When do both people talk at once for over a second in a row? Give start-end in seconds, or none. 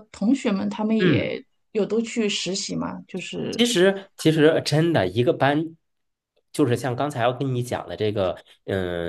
none